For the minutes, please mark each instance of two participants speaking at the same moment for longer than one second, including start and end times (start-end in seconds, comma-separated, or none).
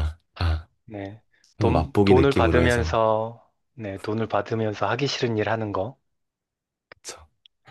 1.6-3.0